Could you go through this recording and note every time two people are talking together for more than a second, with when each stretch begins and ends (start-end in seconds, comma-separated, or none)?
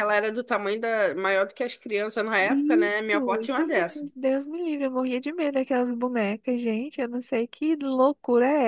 2.4-4.1